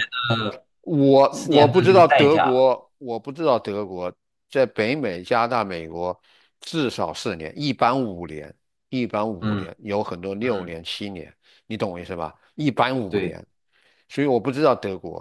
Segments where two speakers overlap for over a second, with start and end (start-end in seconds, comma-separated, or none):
1.3-2.6